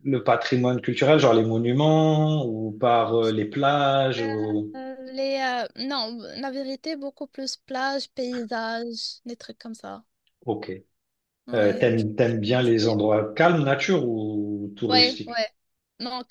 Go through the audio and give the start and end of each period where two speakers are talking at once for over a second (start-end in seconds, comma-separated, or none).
11.5-13.0